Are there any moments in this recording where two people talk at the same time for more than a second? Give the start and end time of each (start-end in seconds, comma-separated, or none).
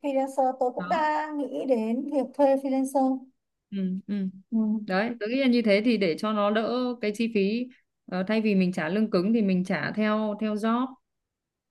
none